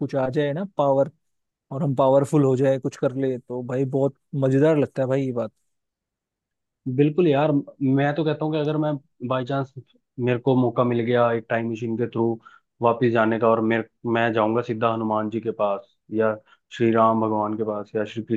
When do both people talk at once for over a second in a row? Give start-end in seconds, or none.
none